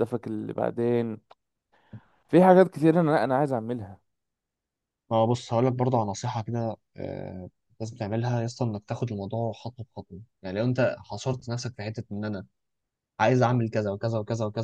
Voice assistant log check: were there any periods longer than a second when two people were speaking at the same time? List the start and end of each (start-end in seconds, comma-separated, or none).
none